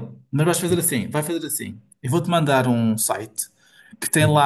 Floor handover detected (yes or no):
no